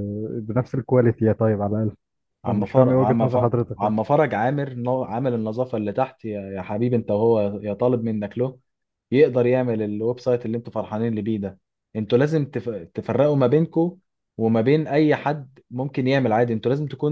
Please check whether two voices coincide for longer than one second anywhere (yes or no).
yes